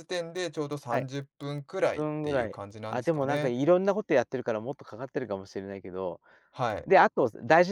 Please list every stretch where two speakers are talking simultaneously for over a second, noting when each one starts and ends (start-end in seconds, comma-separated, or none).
1.9-3.5